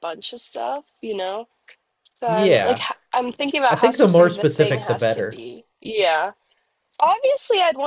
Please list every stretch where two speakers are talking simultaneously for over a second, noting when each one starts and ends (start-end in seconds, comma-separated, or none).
3.7-5.5